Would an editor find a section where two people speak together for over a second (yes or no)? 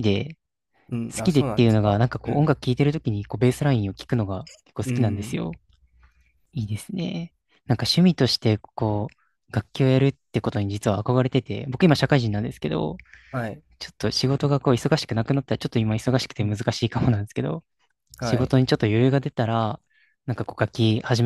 yes